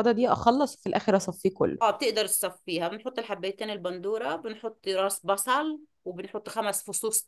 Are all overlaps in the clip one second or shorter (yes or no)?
yes